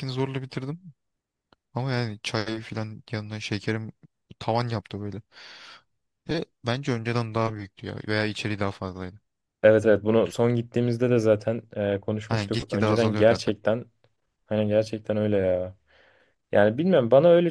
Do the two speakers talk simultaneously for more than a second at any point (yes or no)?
yes